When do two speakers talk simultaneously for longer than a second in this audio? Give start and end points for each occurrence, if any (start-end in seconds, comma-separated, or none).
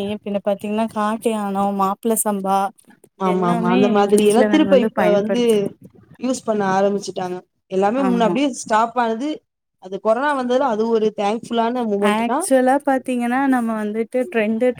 3.3-5.4